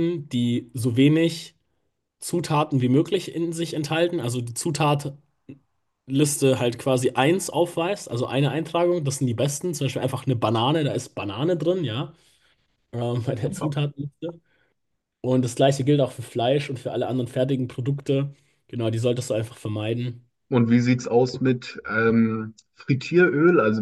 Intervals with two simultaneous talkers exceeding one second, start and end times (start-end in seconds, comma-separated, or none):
none